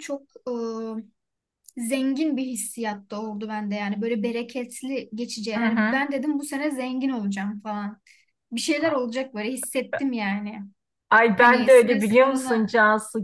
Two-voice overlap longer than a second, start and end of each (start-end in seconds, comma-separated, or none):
11.4-12.7